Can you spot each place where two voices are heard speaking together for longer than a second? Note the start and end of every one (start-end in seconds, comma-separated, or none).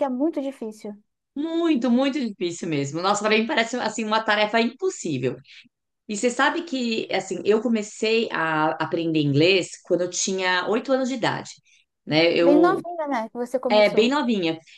none